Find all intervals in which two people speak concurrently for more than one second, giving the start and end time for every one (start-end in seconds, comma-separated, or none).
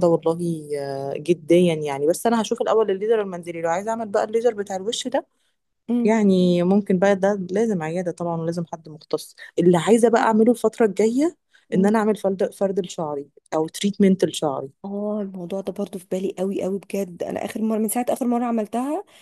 none